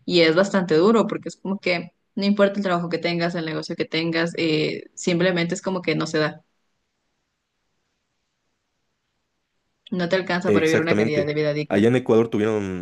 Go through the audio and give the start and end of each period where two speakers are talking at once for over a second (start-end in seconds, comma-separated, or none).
10.4-11.9